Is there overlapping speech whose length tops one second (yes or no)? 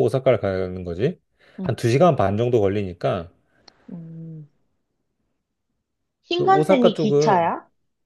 yes